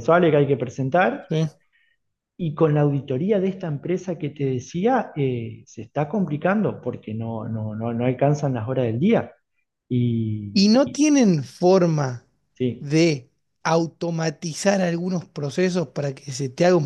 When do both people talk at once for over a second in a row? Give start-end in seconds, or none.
none